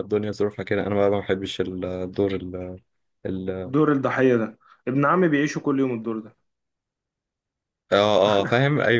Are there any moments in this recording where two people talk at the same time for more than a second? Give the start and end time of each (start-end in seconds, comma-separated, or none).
none